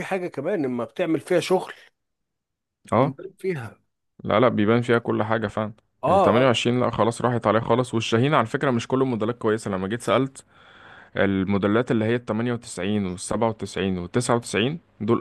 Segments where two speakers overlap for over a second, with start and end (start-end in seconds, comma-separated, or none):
none